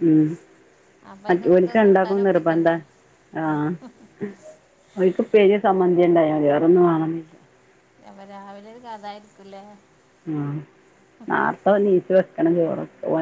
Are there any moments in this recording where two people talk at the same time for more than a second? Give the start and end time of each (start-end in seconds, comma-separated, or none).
1.3-2.7